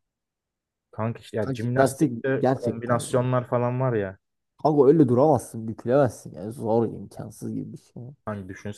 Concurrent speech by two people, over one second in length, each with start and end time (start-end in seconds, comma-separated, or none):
1.4-3.2